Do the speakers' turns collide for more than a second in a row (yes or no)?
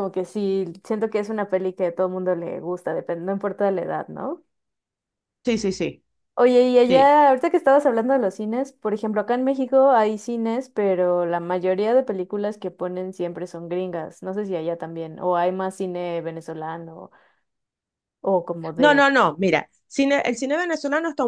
no